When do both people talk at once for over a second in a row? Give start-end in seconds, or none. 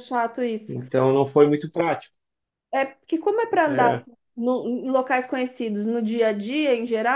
none